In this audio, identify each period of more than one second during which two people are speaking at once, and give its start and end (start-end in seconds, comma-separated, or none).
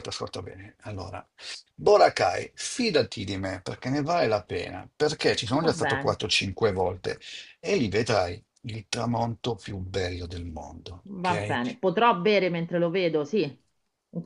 none